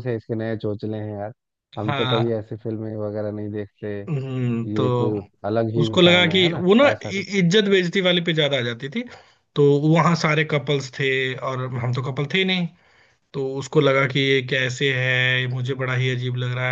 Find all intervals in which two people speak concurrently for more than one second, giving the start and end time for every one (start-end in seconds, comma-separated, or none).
5.8-7.3